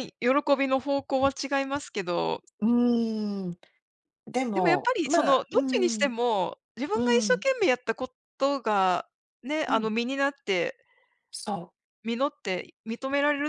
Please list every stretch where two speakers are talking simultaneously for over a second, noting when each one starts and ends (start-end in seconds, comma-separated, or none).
4.5-6.1